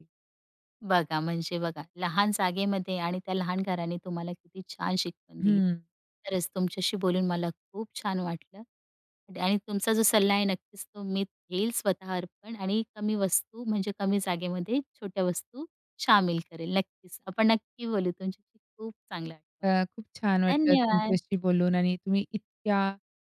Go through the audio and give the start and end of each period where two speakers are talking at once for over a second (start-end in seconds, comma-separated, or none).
19.6-21.2